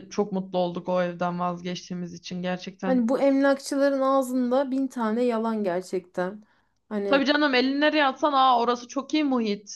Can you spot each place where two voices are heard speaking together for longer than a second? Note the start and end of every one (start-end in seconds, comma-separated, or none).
none